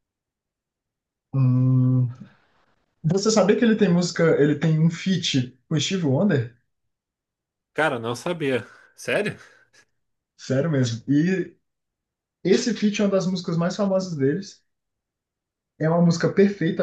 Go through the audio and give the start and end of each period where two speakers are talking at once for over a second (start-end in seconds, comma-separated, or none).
none